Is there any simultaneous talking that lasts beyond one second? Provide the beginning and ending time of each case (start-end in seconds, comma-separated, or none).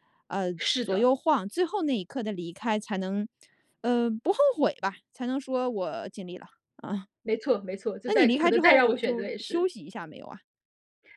8.1-9.7